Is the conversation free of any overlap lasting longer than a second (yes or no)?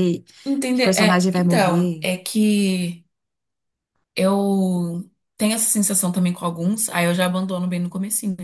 no